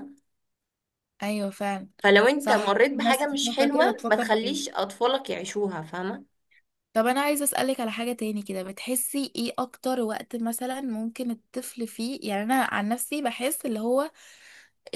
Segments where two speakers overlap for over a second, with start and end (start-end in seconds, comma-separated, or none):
2.4-4.6